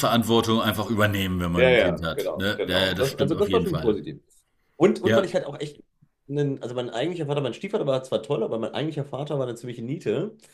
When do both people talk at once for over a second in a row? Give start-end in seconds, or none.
1.6-4.0